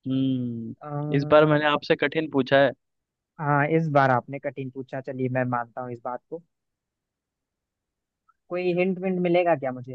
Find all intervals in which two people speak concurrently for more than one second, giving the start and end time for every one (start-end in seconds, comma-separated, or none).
none